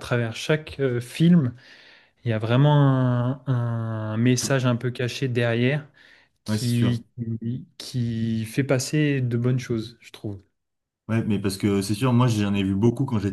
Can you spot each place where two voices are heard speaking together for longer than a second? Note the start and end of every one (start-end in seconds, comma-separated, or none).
none